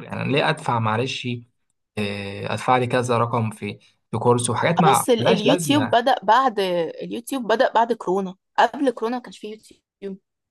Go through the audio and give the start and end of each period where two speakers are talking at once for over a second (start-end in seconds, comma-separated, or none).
4.8-6.0